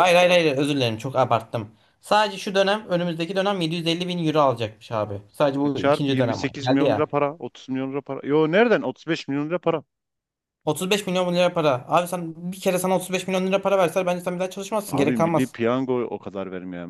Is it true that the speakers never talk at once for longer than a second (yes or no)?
no